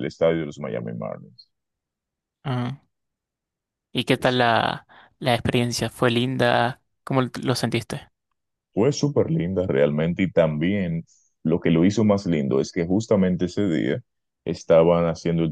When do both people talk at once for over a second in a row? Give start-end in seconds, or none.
none